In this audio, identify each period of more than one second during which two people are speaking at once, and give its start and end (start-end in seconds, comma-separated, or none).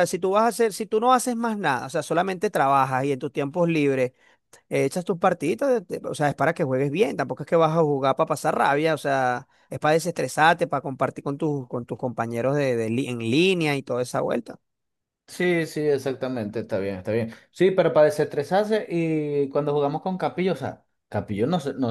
none